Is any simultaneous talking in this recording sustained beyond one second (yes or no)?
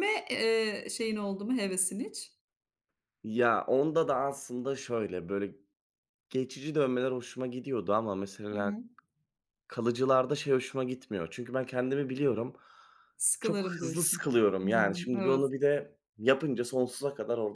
yes